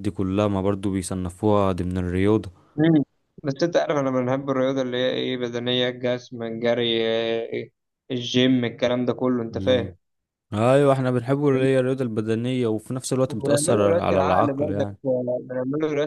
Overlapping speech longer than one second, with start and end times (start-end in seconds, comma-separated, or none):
13.3-14.9